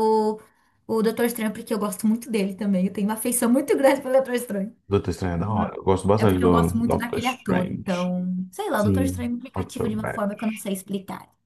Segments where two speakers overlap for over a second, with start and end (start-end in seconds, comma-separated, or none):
6.2-8.1, 8.8-10.7